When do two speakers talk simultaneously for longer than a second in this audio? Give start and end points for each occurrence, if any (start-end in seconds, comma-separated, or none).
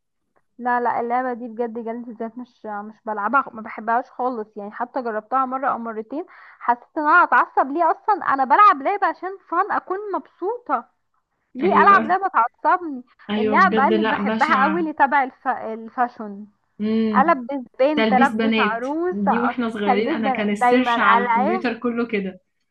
13.3-14.9, 18.0-21.6